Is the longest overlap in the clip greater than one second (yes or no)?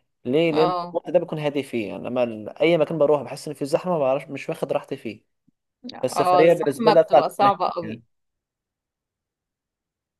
yes